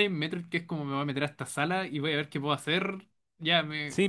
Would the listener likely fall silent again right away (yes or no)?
no